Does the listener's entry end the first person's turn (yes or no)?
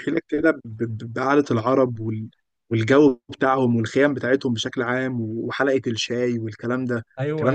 yes